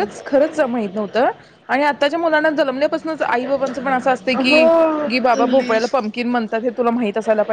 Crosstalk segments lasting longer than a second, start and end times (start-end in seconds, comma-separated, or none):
4.3-5.9